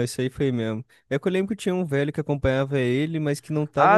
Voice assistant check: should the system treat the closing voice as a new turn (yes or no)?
yes